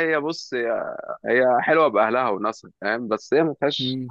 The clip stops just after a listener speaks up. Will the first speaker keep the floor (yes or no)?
yes